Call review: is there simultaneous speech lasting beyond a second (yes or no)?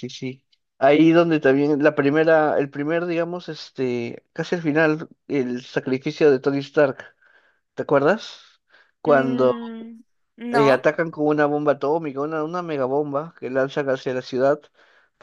no